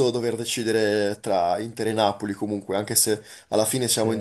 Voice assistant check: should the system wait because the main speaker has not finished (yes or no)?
yes